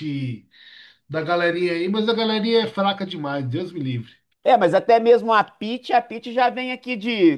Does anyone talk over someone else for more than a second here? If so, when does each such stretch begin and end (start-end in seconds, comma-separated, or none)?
none